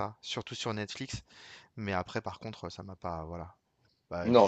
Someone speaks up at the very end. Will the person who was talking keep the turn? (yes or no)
no